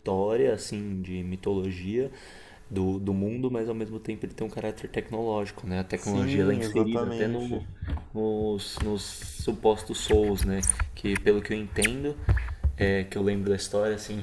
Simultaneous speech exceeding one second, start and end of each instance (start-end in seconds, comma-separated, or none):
6.0-7.6